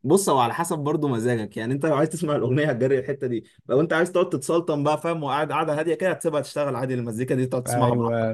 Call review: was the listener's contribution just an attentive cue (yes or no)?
no